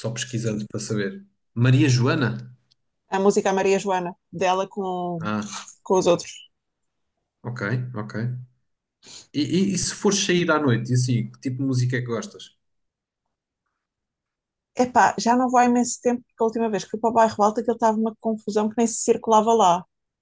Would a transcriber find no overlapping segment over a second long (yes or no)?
yes